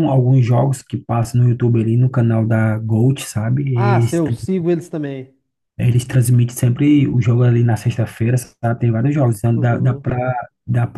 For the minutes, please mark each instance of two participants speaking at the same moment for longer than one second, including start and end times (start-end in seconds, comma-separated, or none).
none